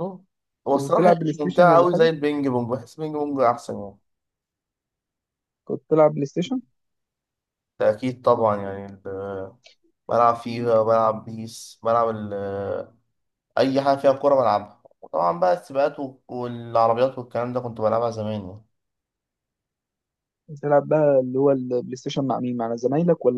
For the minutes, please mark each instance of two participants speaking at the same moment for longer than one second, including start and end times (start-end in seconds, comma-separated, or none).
0.7-2.1